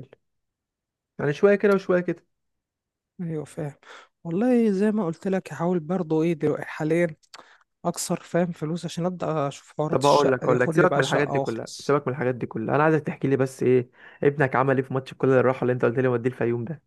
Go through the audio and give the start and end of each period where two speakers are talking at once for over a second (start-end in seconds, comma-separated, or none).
9.9-12.0